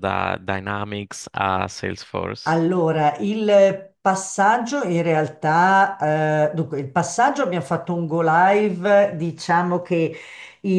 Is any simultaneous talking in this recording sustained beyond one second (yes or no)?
no